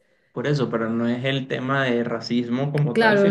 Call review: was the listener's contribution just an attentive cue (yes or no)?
no